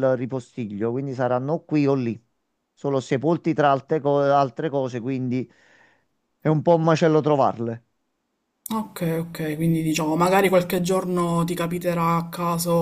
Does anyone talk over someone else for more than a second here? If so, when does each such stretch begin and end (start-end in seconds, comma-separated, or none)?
none